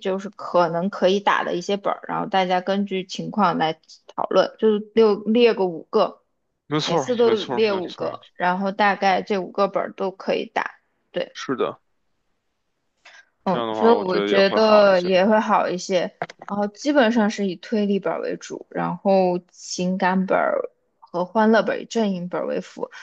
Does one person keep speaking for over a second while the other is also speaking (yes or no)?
yes